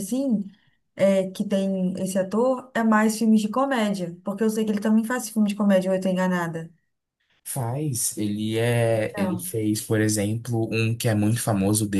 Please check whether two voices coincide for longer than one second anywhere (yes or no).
no